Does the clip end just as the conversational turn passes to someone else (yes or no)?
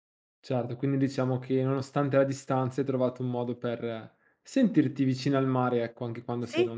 yes